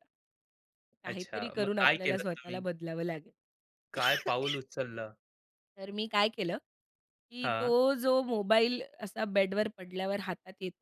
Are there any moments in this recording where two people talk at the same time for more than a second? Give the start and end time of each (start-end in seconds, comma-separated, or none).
1.1-2.6